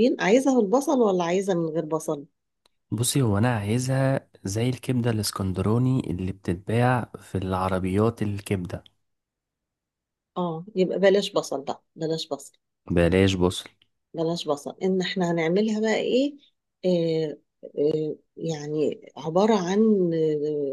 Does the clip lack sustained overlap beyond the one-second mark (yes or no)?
yes